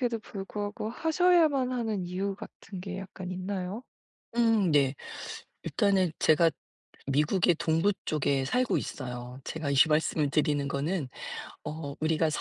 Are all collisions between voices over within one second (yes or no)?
yes